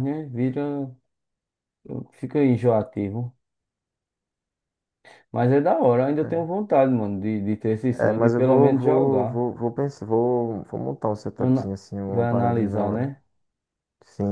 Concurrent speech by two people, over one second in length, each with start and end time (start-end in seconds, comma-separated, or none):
7.9-9.4, 11.4-13.1